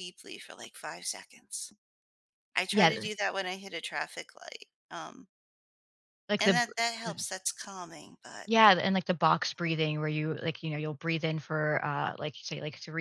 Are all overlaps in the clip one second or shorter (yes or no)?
yes